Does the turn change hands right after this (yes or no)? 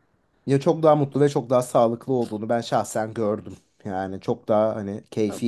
no